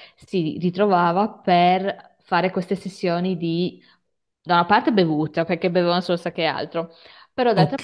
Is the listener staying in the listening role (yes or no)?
yes